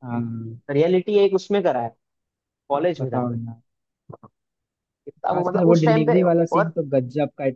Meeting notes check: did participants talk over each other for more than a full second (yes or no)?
yes